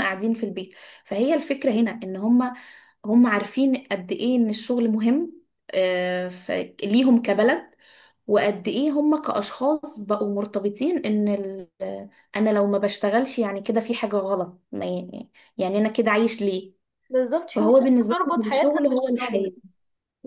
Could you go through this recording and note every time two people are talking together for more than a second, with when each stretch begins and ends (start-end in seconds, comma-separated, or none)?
17.6-19.5